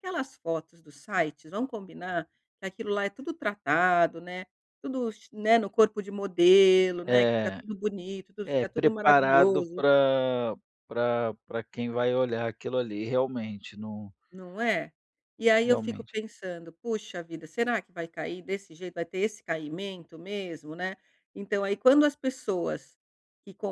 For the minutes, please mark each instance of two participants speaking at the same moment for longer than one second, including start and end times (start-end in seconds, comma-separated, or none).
8.4-9.8